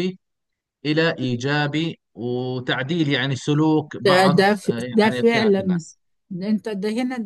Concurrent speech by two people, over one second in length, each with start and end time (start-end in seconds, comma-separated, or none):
4.0-5.8